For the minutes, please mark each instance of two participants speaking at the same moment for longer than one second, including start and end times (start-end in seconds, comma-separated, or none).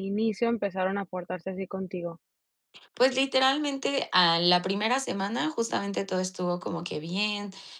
none